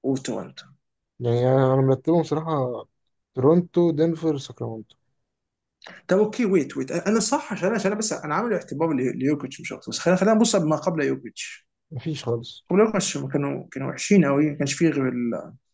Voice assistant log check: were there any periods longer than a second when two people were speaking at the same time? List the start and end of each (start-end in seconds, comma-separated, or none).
none